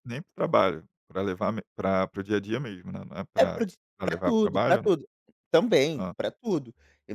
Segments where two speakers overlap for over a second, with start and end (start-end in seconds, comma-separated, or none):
3.4-4.9